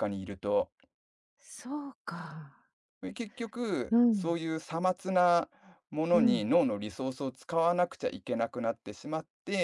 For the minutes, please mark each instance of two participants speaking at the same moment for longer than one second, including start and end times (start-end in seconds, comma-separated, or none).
none